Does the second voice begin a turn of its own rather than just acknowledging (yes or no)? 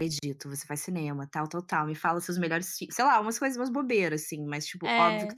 no